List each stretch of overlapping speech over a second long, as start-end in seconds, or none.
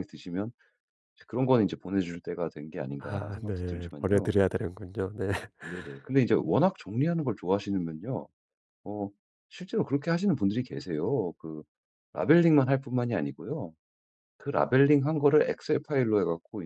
3.0-4.4